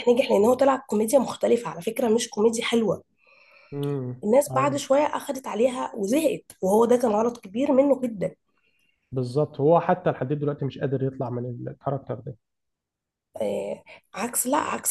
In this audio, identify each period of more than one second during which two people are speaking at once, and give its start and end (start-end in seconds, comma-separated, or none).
none